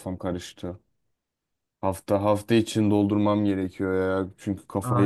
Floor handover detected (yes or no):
yes